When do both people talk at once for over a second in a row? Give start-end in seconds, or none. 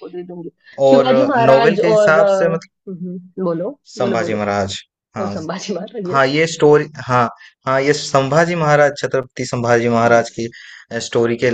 0.9-2.7